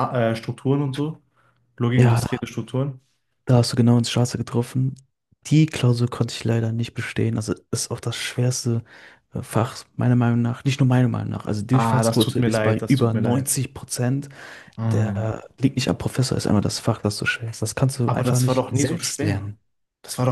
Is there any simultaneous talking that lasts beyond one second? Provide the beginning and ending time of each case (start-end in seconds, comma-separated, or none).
11.7-13.5, 18.1-19.5